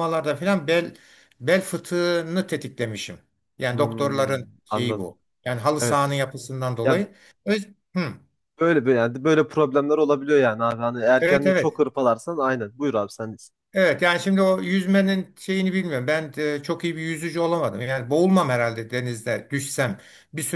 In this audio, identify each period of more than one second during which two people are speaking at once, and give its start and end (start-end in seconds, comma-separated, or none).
3.7-5.1